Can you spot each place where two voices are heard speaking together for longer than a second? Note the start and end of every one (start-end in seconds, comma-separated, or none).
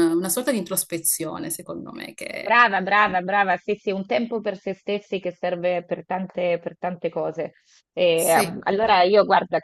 none